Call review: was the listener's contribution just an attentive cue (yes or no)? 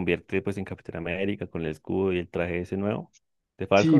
no